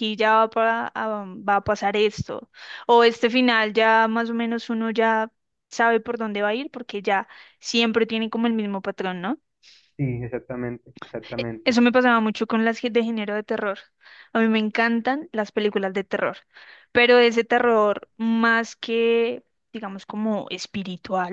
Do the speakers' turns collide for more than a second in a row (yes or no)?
no